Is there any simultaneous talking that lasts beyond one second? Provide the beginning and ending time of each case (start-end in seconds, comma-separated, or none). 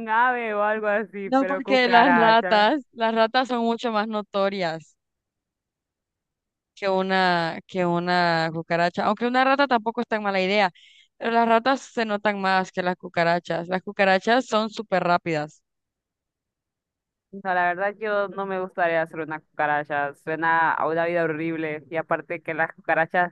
1.2-2.6